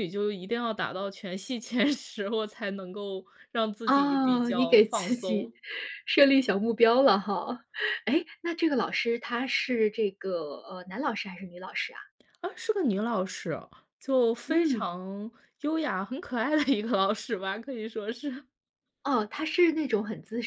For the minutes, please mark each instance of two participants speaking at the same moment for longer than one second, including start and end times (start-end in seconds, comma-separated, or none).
3.8-5.5